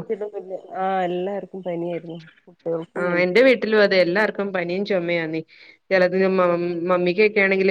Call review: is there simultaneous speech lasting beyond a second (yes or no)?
yes